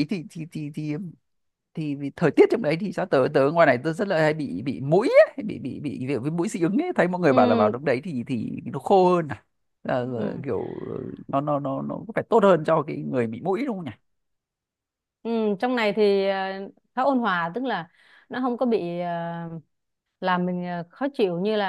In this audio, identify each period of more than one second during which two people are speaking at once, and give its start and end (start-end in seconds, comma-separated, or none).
none